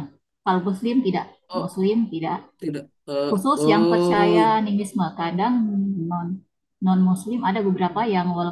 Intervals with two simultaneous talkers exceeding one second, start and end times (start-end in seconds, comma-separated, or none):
3.3-4.6